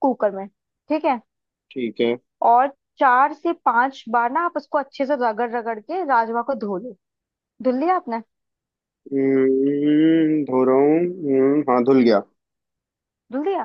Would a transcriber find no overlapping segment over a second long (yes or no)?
yes